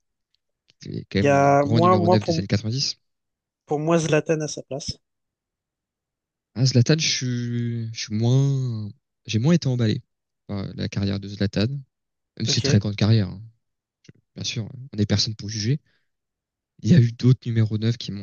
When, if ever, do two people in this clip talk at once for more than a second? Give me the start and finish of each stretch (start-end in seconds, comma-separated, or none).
1.2-2.5